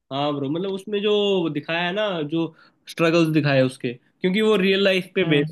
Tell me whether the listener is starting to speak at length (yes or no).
no